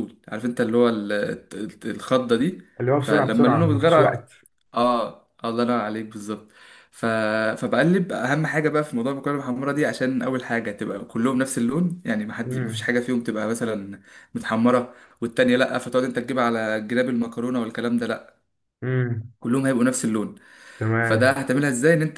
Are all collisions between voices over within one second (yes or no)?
no